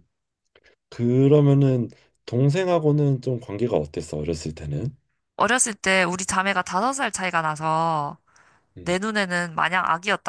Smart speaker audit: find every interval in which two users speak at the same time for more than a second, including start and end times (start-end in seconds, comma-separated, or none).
none